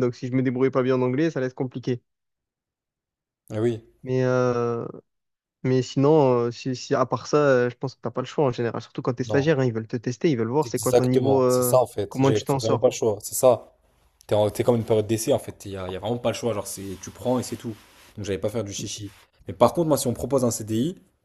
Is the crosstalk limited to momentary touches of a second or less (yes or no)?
no